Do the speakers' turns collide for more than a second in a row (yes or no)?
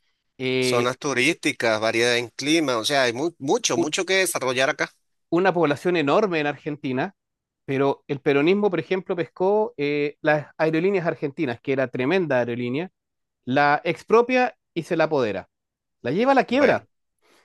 no